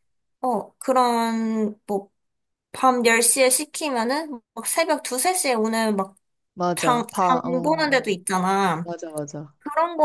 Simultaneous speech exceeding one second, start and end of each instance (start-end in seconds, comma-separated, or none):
6.8-8.2